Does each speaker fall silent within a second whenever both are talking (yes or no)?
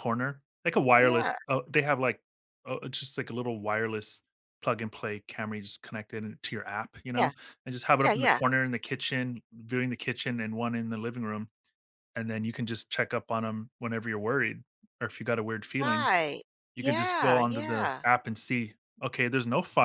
no